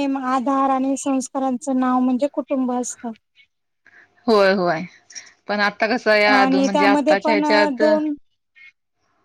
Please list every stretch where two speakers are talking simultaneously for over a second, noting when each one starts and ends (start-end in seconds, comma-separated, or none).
6.3-7.8